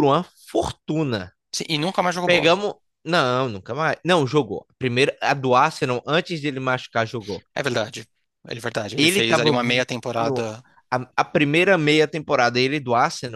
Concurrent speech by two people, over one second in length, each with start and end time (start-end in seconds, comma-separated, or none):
9.0-10.5